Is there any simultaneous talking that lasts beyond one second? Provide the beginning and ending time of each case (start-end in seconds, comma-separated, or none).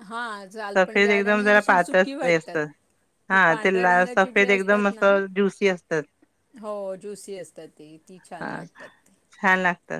0.8-2.6, 3.3-5.1